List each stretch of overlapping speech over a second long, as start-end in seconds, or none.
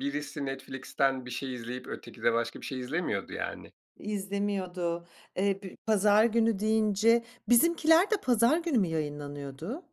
none